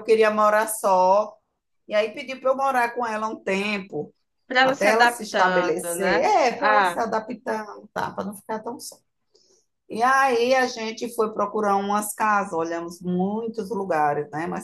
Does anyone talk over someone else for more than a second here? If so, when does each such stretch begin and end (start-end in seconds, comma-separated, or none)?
4.6-7.0